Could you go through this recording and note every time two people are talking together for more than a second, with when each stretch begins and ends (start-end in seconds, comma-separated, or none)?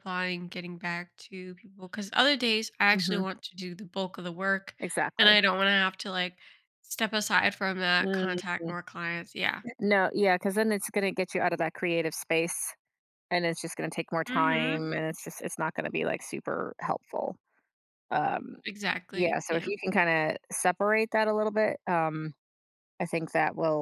none